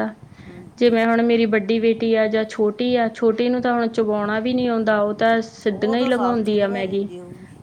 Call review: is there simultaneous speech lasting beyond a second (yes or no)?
yes